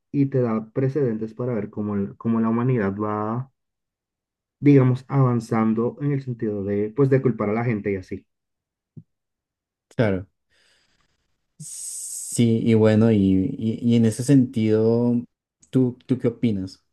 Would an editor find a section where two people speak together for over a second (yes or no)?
no